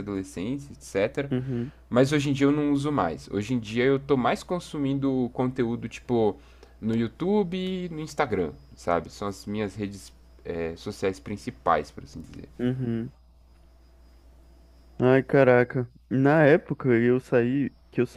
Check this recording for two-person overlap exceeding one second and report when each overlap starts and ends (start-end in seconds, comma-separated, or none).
none